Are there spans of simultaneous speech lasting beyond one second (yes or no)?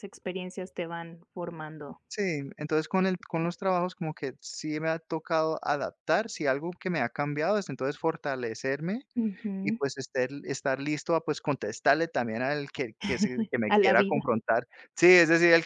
no